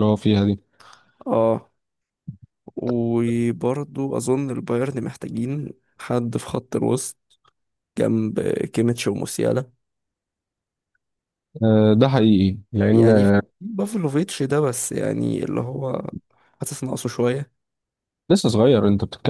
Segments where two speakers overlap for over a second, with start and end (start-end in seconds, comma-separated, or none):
none